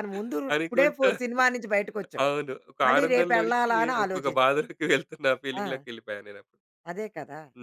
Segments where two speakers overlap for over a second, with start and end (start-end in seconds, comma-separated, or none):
2.9-4.6